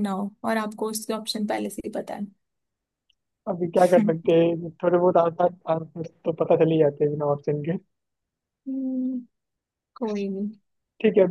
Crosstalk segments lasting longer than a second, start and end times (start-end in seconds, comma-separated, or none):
none